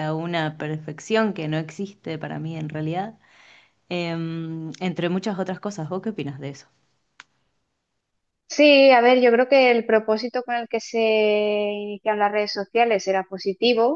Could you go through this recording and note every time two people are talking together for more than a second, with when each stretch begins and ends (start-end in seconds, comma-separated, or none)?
none